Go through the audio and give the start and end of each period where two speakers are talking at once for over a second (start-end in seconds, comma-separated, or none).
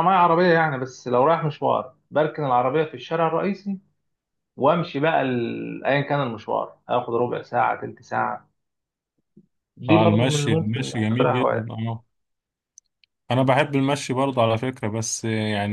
9.9-11.7